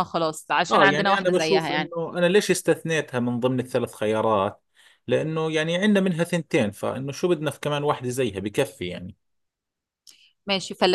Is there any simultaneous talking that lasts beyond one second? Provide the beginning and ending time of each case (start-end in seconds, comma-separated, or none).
0.7-1.9